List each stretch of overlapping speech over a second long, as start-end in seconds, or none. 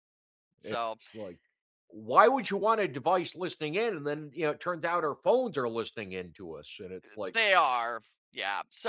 none